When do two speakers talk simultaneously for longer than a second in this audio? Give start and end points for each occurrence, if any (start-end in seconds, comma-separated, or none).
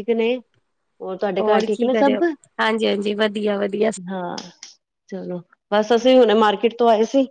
none